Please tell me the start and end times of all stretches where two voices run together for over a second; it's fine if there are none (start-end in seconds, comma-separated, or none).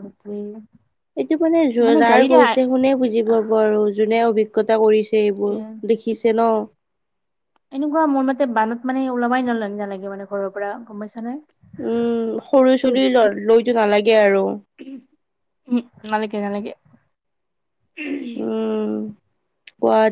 none